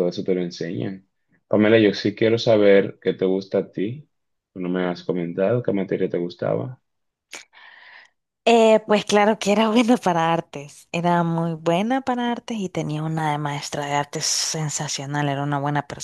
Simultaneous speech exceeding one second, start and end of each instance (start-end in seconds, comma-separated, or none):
none